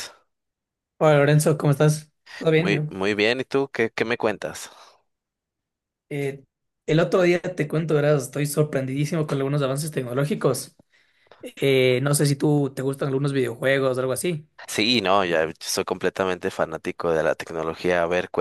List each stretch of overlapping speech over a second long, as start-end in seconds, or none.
none